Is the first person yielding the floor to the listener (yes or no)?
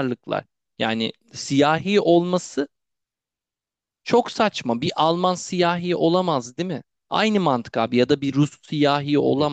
no